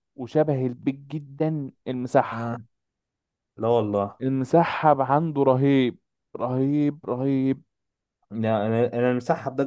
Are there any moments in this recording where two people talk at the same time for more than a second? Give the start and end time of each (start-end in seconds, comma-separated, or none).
none